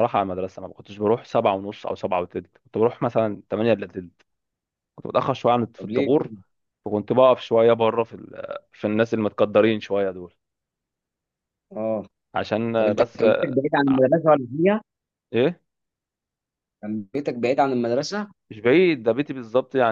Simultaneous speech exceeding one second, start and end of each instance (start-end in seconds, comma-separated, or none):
none